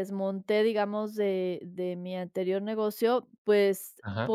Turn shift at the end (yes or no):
no